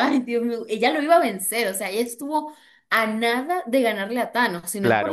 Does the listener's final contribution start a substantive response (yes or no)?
yes